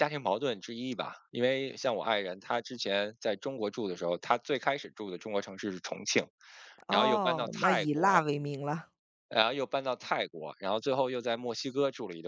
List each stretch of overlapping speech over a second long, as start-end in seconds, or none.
6.9-8.2